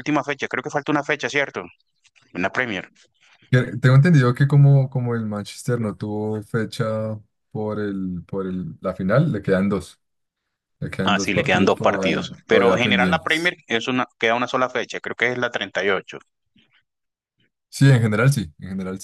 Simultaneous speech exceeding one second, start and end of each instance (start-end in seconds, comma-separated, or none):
11.0-13.5